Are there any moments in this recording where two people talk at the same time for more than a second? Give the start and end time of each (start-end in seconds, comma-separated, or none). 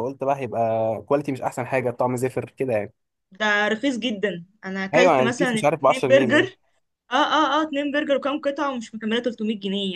4.9-6.5